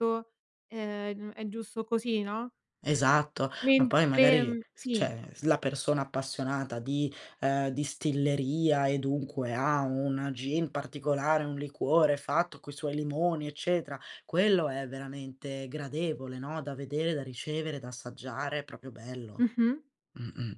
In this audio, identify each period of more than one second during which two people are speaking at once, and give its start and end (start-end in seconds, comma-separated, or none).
3.6-5.1